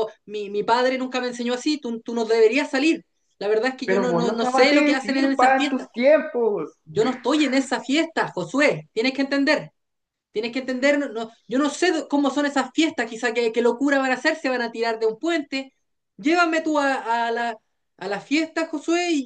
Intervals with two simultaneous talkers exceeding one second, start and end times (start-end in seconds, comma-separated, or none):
3.8-5.9